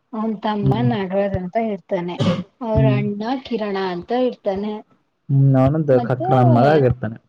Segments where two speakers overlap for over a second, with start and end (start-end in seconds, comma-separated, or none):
none